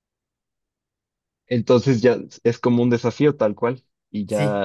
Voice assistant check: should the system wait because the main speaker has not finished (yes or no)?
no